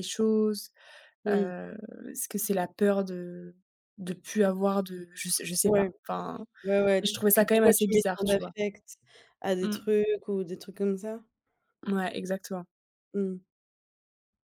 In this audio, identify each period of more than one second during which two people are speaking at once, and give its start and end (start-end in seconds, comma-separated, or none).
7.0-8.5